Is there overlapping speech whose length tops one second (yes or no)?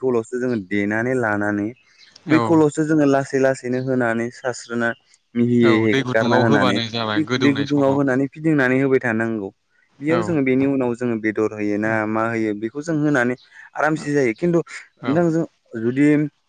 yes